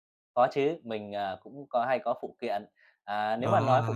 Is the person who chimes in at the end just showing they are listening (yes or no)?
yes